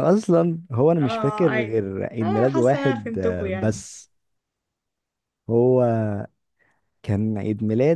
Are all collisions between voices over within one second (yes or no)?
no